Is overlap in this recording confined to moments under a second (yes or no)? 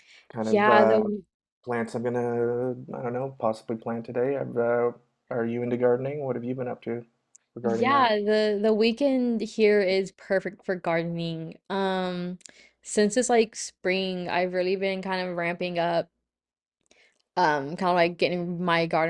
yes